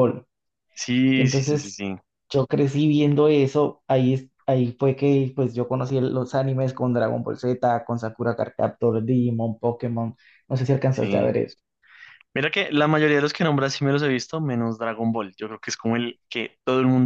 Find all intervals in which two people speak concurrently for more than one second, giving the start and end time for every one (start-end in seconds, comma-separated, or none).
none